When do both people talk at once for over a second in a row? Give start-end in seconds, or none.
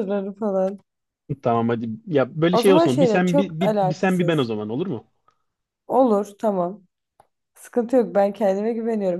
2.5-4.5